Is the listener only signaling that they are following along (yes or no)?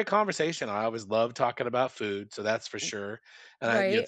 yes